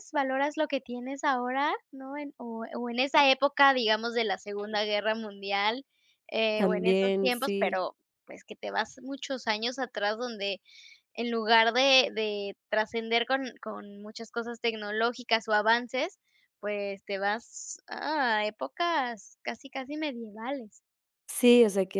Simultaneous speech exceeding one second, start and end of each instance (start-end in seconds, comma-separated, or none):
6.5-7.8